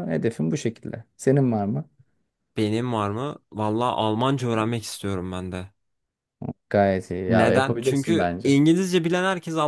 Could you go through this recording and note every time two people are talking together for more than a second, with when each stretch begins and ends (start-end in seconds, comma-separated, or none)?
7.3-8.6